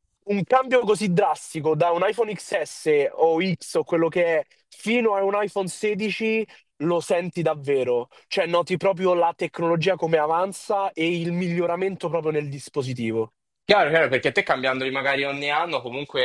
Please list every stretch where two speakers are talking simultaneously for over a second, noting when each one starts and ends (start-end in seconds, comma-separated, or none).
none